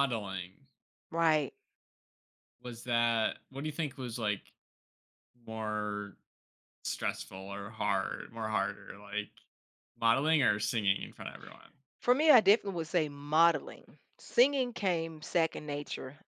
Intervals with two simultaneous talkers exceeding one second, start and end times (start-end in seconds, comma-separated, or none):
none